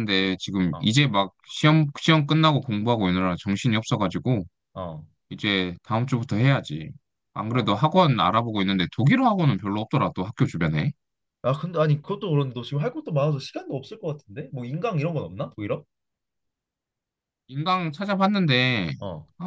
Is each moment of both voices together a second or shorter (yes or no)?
yes